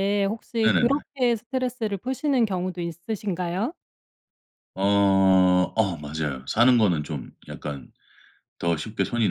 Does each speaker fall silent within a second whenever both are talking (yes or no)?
yes